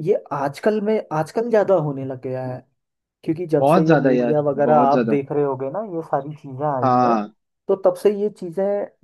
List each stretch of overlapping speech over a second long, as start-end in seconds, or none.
3.6-5.2